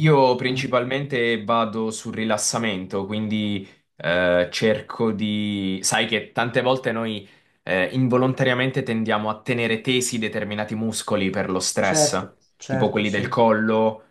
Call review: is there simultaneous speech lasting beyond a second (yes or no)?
yes